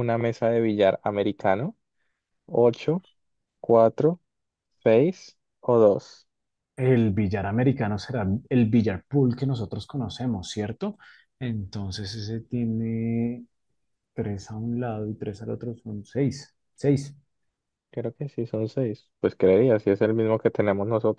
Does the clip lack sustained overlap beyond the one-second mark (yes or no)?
yes